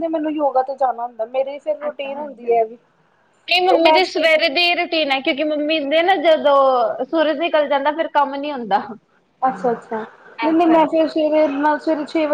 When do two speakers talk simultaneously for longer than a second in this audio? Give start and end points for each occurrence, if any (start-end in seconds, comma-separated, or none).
none